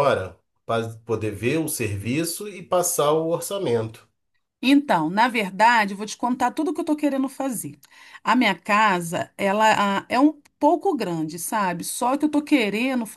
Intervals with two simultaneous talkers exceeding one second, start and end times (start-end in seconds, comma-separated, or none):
none